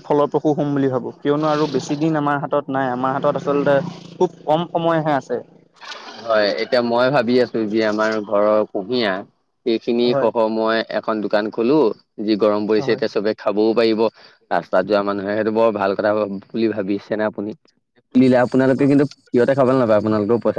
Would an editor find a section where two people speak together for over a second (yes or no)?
no